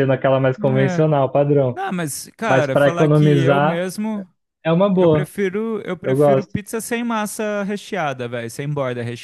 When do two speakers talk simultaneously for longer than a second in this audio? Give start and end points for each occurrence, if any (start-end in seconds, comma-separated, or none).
2.5-3.8